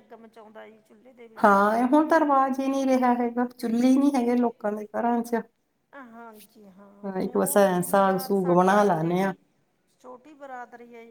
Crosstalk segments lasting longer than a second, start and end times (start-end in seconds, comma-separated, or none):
7.2-9.3